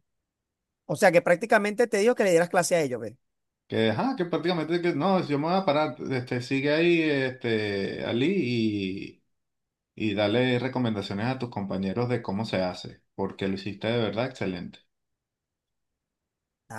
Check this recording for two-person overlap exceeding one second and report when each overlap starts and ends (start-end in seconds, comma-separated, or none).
none